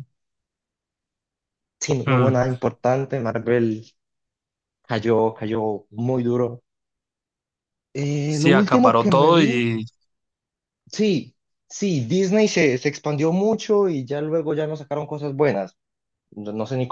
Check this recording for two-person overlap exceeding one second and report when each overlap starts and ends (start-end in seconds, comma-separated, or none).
8.3-9.7